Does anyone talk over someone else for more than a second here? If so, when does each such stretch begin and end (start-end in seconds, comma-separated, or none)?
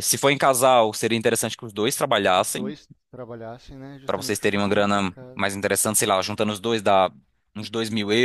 4.0-5.4